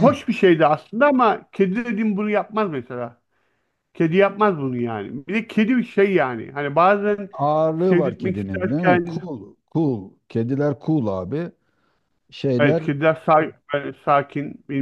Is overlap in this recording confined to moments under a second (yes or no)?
no